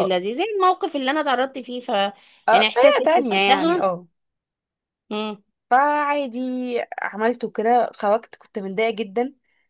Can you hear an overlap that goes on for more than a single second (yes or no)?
yes